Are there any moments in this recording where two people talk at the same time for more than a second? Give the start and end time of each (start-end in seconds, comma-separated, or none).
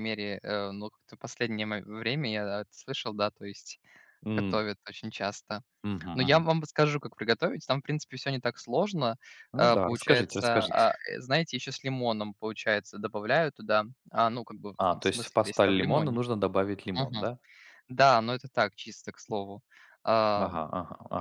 9.5-10.9, 14.8-16.2